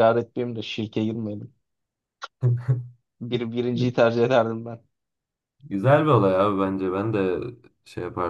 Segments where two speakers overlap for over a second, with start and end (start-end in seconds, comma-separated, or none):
none